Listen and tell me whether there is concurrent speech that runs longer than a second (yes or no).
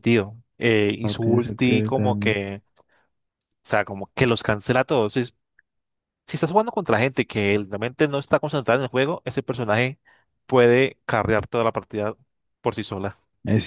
yes